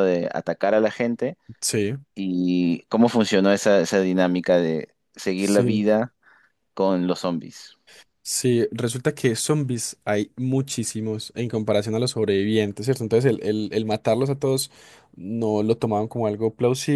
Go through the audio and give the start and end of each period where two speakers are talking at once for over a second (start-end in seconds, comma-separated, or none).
none